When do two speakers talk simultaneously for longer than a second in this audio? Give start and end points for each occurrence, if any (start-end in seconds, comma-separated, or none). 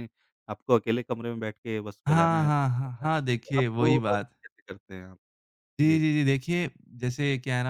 2.1-4.3